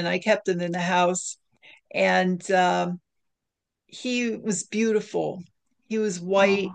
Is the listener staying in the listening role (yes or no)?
yes